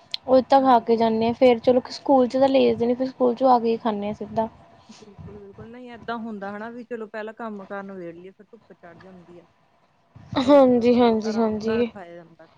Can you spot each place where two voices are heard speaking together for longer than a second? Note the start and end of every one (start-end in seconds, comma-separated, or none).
10.5-11.9